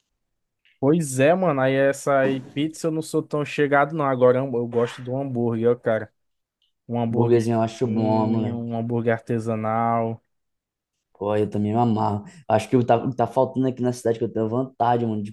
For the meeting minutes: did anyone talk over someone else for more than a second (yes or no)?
yes